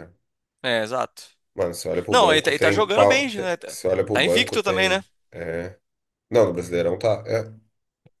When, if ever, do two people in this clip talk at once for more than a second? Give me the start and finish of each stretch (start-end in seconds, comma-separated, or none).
2.1-5.0